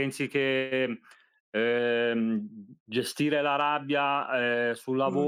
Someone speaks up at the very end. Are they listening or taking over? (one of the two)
listening